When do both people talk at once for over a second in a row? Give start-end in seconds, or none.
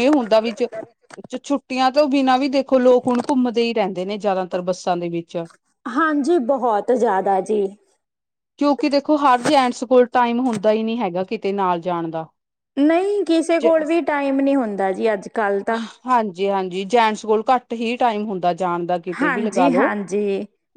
none